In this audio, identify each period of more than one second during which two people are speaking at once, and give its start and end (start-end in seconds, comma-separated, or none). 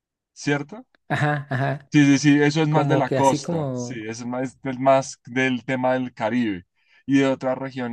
2.7-4.1